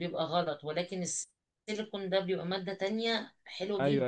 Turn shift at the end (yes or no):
yes